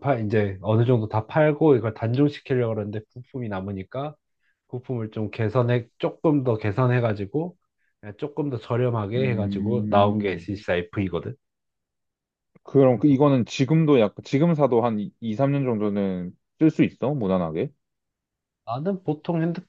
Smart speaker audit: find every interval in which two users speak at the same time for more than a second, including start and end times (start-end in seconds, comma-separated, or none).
9.1-10.5